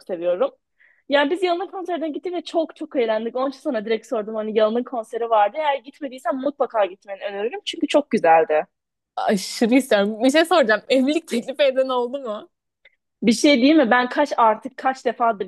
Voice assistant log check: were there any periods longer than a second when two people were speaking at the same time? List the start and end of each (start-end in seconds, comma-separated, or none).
none